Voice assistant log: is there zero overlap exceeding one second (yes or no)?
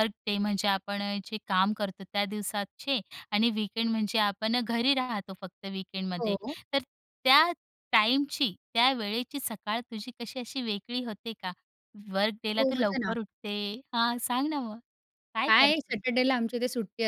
yes